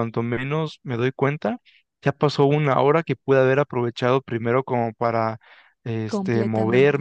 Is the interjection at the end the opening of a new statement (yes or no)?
no